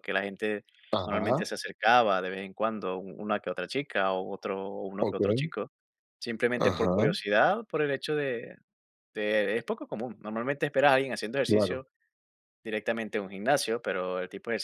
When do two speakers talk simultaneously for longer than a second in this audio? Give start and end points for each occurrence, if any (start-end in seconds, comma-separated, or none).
none